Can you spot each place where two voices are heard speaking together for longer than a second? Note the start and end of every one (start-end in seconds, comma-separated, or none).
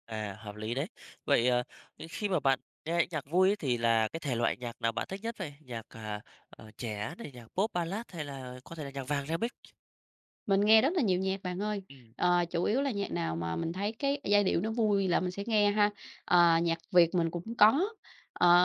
none